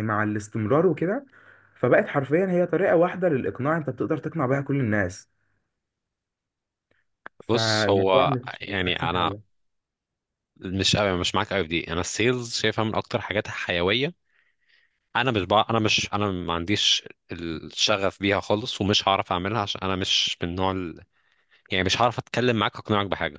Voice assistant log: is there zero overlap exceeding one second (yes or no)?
no